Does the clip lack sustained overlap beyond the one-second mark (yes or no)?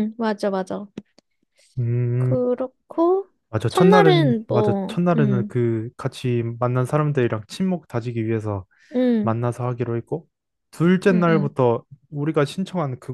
no